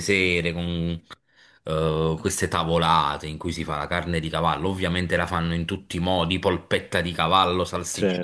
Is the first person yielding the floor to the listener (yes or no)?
no